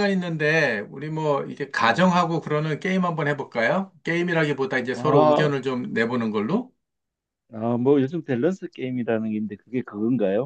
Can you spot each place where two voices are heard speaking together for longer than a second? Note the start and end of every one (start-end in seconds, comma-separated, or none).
none